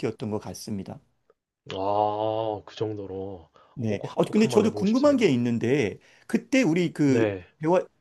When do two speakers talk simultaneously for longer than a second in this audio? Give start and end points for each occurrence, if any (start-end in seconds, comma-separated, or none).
3.8-5.3